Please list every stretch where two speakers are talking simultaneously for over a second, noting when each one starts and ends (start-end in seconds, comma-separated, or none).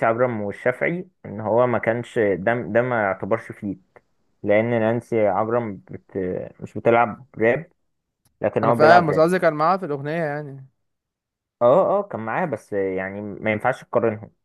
none